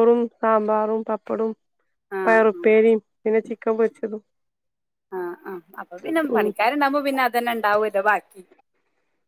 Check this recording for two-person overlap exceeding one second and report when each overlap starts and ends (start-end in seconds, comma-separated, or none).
none